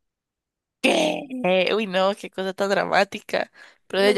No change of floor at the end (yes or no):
no